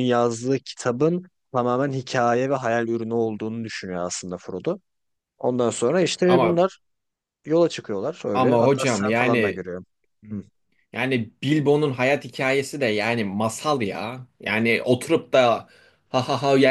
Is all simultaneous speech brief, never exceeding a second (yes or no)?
no